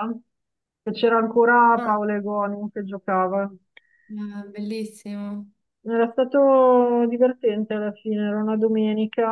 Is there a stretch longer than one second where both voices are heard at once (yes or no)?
no